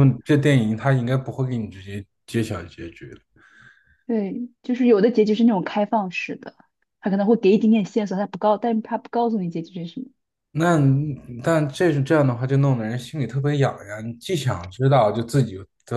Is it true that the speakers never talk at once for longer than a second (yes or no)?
yes